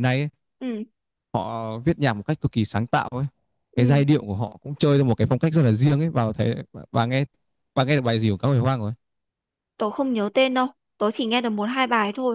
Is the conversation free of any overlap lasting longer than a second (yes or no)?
yes